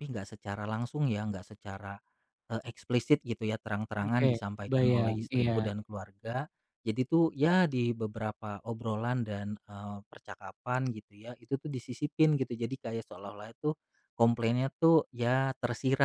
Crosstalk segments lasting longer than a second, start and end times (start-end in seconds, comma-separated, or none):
4.0-5.7